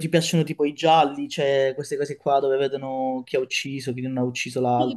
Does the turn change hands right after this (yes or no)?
yes